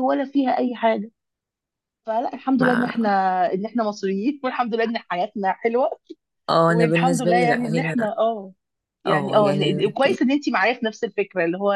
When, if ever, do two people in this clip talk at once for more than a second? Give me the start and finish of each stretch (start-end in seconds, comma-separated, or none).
6.7-8.0, 9.1-10.3